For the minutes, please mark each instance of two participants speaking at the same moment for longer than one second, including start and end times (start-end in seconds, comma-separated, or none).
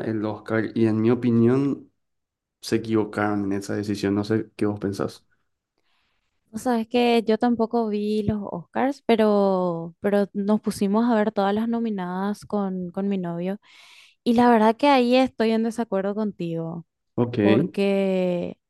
none